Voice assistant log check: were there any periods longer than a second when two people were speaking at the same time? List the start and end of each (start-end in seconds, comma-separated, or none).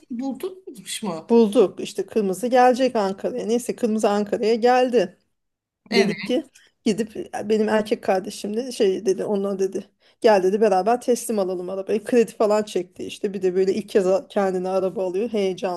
none